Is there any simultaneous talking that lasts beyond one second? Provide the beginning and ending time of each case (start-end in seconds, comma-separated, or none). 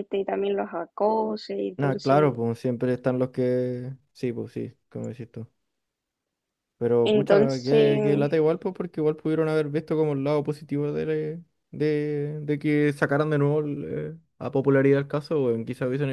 7.0-8.3